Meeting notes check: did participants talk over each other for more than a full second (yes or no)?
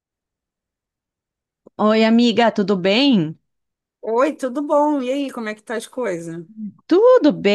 no